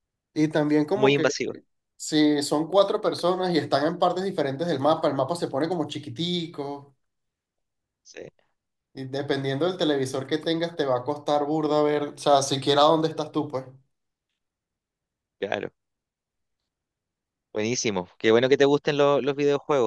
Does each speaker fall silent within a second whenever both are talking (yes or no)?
yes